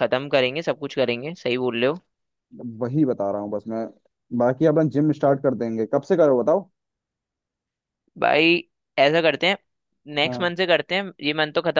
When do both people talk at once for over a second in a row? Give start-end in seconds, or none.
none